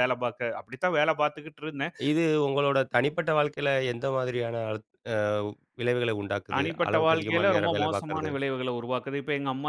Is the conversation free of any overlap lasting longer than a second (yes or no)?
no